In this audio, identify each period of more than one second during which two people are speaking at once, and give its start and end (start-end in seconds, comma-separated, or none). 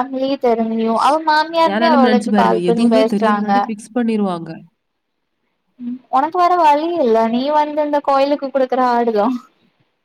1.7-3.5